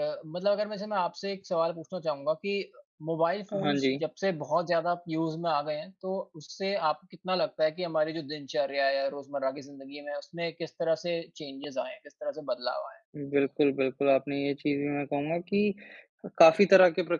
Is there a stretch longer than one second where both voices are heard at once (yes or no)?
no